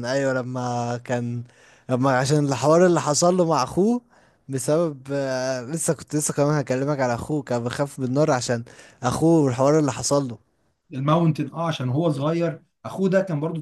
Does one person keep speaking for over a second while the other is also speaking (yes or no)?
no